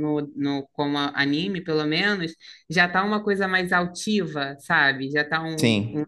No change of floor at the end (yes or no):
yes